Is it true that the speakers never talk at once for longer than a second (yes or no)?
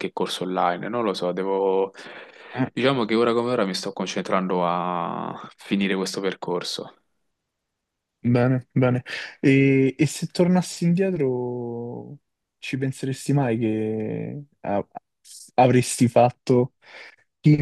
yes